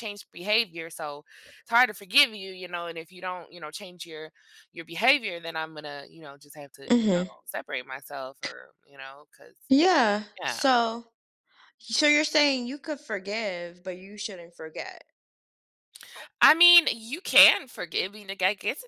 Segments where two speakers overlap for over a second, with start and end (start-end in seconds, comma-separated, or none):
none